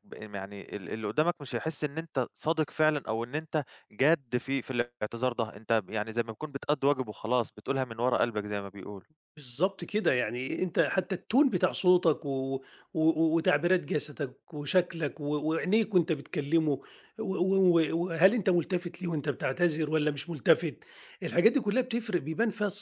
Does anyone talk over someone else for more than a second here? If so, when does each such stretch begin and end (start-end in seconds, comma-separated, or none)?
none